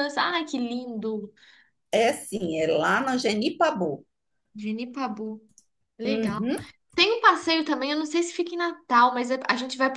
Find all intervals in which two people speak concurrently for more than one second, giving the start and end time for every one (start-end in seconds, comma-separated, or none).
none